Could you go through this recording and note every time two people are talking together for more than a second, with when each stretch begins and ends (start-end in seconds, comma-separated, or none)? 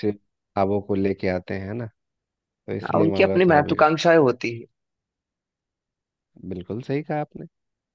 2.8-4.3